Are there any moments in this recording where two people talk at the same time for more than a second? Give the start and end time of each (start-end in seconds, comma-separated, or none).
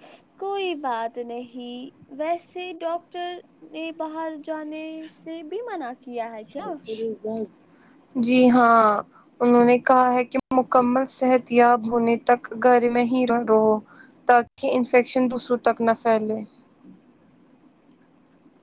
none